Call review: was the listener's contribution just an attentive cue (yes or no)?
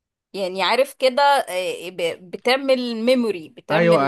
no